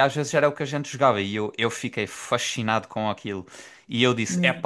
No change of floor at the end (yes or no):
yes